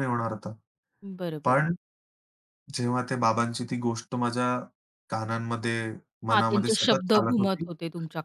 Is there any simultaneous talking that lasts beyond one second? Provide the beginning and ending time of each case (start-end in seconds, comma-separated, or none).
6.3-7.6